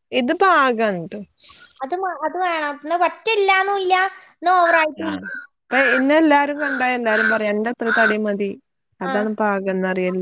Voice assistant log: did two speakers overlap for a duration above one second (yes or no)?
no